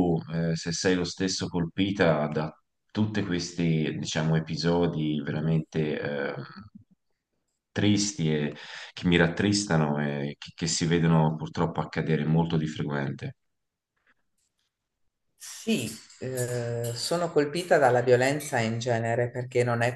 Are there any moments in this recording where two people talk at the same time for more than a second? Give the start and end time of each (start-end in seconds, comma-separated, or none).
none